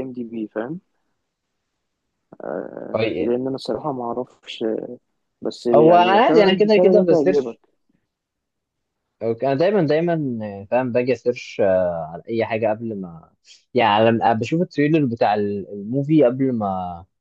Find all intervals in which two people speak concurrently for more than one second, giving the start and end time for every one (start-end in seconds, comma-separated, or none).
5.7-7.6